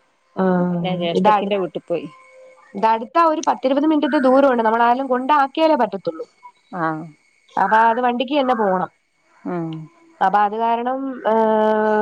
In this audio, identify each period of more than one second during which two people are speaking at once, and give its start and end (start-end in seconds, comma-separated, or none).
none